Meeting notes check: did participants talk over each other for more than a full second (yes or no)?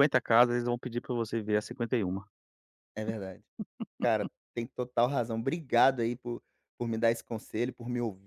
no